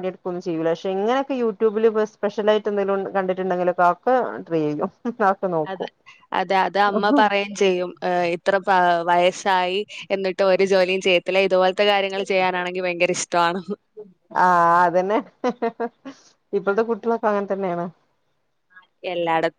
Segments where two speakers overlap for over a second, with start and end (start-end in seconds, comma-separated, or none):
none